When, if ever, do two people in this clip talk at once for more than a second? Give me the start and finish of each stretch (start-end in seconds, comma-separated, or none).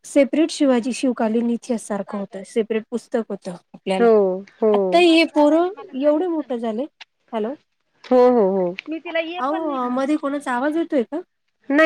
none